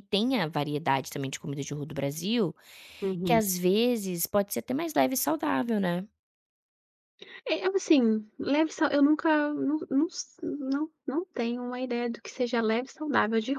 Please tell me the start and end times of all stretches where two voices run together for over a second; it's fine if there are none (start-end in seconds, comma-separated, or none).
none